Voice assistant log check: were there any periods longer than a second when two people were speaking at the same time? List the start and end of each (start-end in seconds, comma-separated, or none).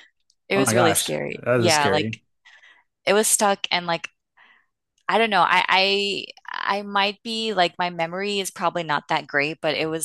0.5-2.2